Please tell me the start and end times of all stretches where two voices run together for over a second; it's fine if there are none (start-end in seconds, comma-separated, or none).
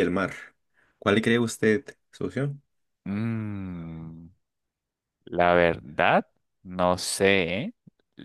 none